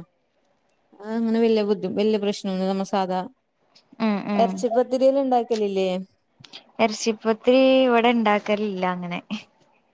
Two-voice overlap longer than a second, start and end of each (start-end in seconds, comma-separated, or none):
none